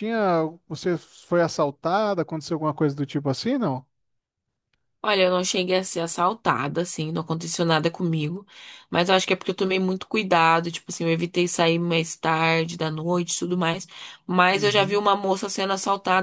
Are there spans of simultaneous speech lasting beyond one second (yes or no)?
no